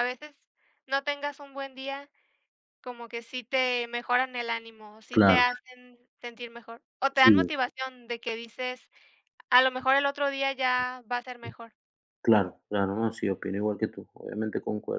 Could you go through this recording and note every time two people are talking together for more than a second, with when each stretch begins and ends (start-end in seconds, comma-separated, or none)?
none